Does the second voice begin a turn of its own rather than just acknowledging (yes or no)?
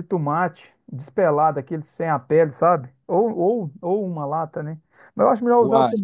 no